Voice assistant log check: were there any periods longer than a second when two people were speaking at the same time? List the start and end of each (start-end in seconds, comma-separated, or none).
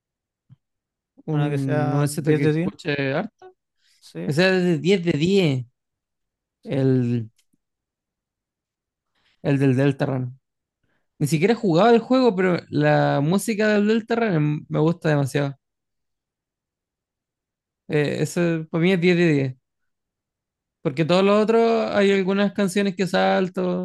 1.4-2.7